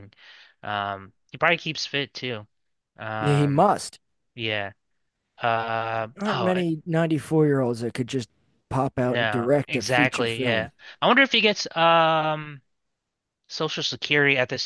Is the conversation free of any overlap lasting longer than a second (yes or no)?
no